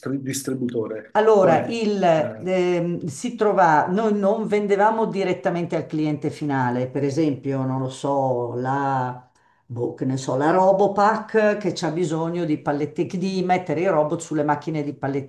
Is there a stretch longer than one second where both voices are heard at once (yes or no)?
no